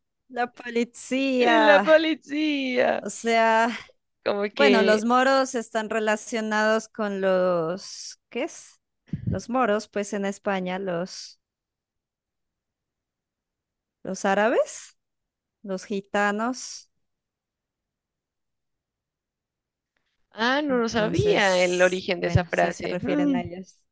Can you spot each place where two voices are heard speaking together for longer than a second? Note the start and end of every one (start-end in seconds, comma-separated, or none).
20.7-23.4